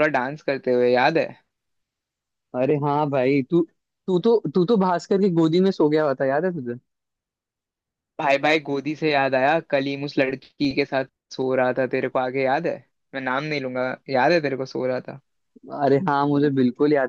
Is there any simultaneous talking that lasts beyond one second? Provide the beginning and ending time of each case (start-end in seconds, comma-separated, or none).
none